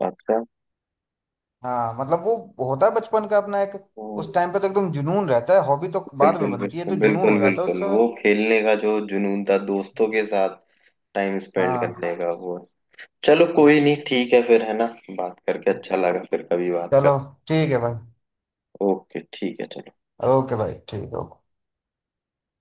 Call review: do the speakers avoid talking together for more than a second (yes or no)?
no